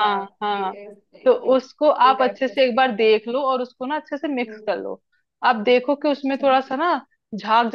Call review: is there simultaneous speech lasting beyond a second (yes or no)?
yes